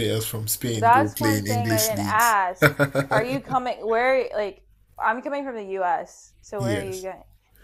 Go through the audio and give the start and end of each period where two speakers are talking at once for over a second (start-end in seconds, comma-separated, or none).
0.8-2.4